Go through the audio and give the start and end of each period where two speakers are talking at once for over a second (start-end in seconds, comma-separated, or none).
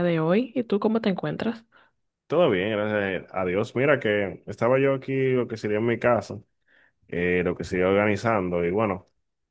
none